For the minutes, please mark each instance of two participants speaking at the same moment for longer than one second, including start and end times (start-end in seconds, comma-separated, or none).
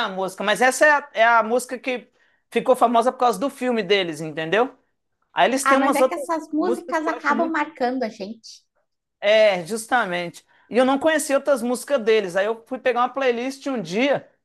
5.6-7.6